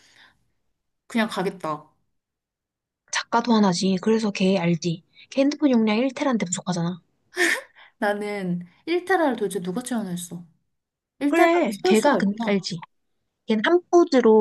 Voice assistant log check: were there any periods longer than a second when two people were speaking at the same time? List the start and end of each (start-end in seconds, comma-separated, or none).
11.3-12.6